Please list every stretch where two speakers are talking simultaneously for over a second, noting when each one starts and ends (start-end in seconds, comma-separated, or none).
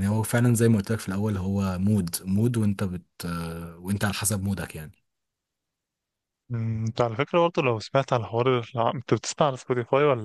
none